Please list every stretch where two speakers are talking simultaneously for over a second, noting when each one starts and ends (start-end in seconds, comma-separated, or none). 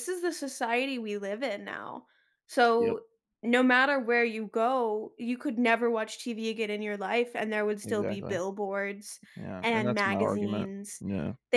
9.6-11.0